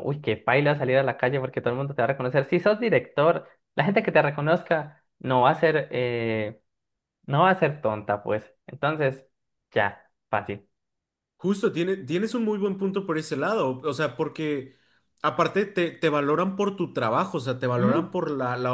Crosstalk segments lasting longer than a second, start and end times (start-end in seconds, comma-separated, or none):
none